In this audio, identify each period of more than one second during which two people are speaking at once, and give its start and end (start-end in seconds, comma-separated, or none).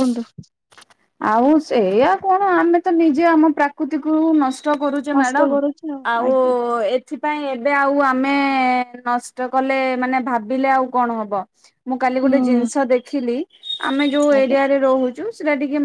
none